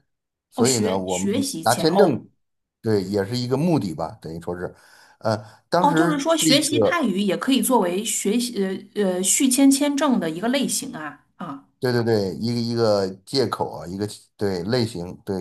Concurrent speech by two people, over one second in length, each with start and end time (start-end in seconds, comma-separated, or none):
0.6-2.2, 5.8-7.1